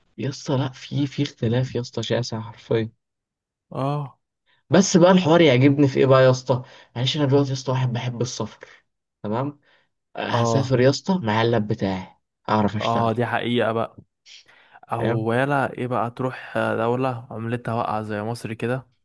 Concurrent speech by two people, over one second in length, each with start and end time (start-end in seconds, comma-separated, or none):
none